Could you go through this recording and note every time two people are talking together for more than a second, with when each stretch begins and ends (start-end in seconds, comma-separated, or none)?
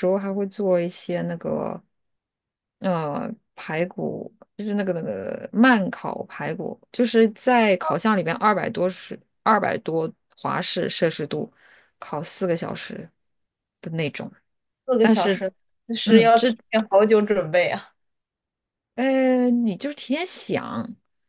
none